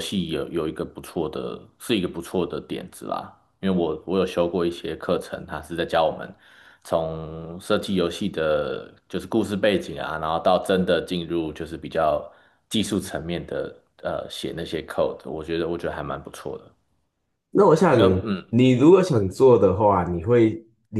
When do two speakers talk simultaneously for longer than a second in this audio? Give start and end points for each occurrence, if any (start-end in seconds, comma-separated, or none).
none